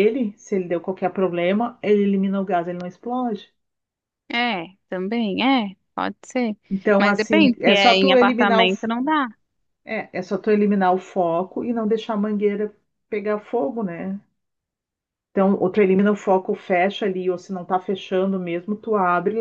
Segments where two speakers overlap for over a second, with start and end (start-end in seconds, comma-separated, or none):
7.0-8.7